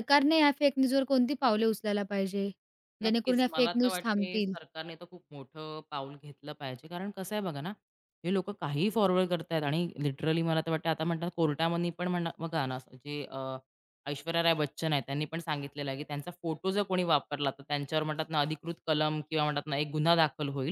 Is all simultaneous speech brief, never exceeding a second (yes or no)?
no